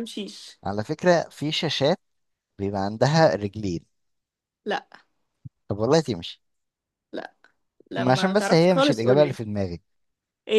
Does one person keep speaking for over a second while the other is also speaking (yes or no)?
yes